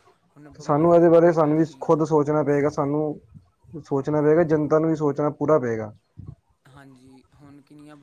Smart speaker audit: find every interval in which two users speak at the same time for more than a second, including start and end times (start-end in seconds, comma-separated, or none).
0.6-2.0